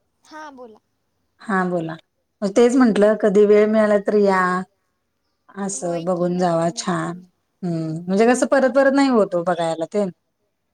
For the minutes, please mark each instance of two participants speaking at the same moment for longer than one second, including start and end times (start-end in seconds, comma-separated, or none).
5.8-7.1